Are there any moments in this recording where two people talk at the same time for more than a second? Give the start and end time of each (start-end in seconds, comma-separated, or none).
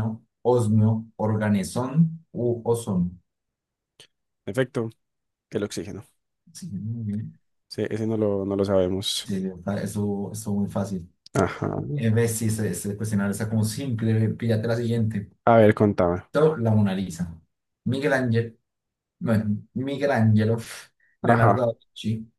none